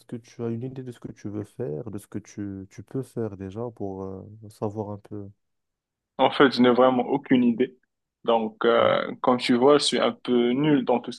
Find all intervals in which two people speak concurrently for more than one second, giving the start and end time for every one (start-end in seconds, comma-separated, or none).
none